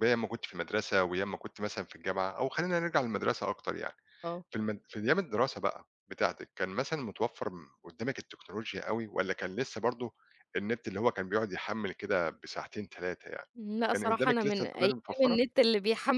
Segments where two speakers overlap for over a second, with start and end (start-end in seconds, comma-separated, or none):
13.9-15.4